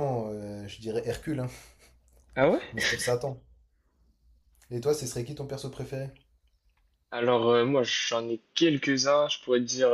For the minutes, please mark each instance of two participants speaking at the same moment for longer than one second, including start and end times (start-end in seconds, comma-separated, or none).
none